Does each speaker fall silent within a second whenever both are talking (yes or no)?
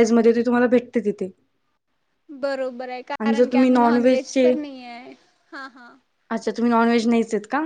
no